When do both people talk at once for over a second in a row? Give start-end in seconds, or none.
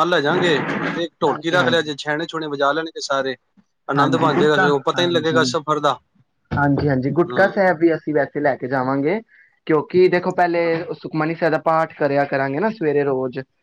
4.0-5.4